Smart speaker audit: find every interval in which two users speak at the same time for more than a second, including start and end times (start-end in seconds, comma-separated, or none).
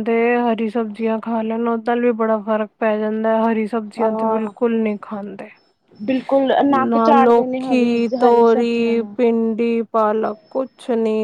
6.9-9.2